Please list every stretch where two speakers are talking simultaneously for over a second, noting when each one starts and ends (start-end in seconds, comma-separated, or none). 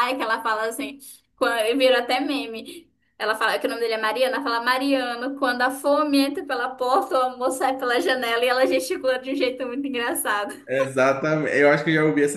none